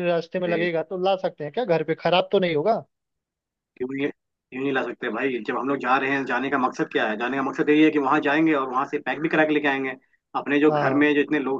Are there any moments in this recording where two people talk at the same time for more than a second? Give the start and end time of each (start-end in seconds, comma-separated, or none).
none